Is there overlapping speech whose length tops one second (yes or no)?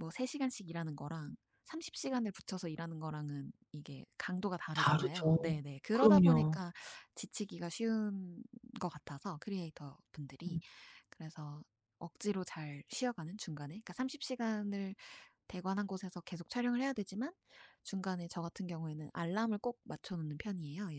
yes